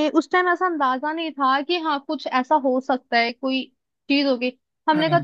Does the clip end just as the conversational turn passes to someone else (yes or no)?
no